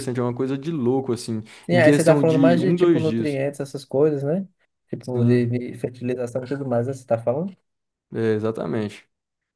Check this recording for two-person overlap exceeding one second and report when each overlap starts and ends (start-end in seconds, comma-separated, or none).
1.6-3.4